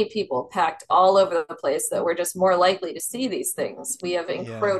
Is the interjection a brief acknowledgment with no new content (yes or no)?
yes